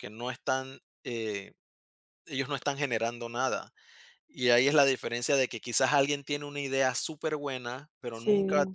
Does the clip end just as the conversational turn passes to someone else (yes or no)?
no